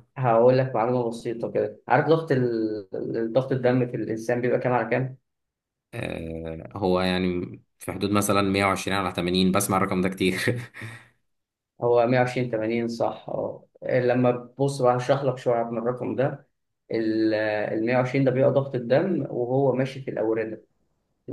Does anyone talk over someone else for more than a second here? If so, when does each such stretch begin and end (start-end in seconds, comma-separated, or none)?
none